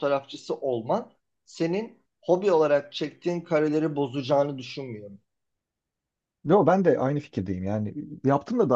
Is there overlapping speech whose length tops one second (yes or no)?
no